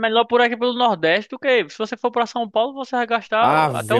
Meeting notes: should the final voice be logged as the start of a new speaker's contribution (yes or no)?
yes